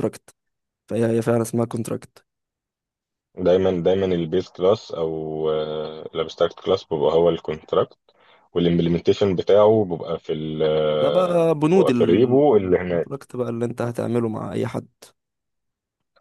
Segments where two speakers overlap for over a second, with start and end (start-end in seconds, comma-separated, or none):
10.9-13.1